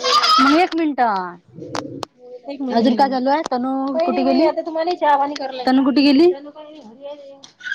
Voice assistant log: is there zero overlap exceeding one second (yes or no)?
no